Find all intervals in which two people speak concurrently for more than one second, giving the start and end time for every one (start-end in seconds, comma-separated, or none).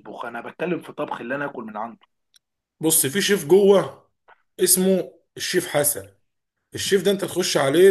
none